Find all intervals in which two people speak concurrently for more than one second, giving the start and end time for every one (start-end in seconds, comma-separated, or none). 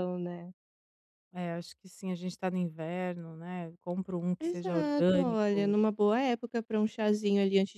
4.4-5.8